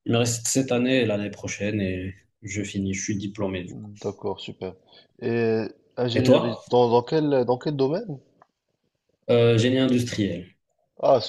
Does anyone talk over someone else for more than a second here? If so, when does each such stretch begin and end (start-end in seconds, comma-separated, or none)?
none